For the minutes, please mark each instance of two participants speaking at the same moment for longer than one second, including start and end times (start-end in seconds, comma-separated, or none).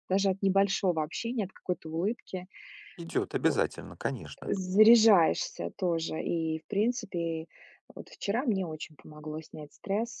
none